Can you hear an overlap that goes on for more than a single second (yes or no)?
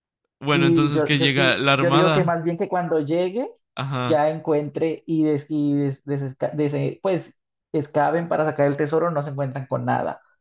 yes